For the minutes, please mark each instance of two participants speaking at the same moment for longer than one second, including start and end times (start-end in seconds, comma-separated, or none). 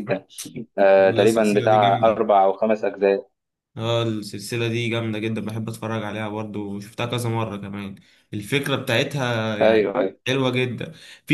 1.0-2.2